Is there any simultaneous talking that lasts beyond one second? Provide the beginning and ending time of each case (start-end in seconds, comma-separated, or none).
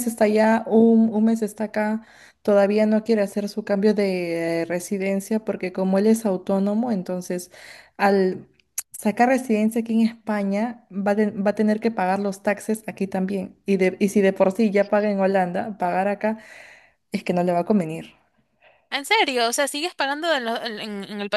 none